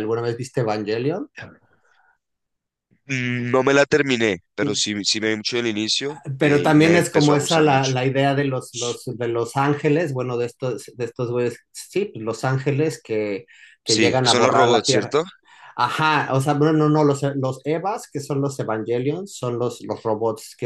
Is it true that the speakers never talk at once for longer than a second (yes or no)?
no